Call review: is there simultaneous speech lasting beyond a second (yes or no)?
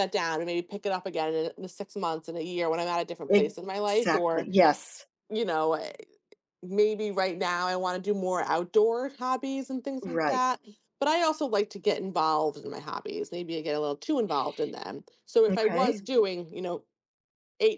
yes